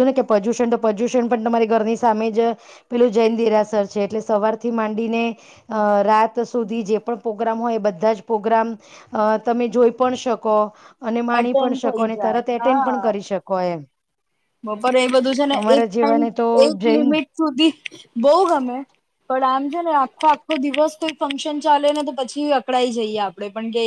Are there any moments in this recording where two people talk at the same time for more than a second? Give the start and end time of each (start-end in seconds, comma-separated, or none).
11.4-13.0